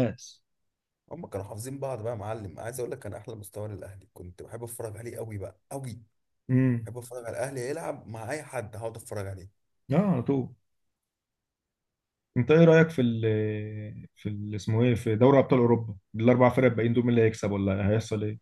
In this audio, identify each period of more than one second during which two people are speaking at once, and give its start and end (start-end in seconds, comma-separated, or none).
none